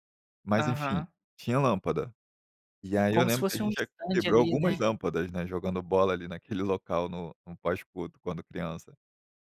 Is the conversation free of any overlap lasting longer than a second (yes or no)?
no